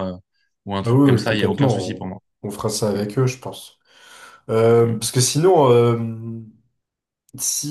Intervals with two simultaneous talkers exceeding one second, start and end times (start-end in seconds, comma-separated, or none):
0.8-2.1